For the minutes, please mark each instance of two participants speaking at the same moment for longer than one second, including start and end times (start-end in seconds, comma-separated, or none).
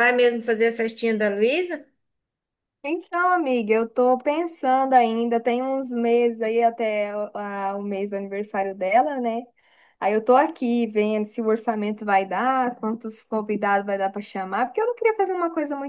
none